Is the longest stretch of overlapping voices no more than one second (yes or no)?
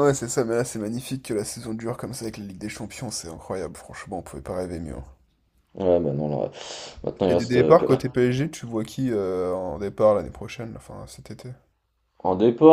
yes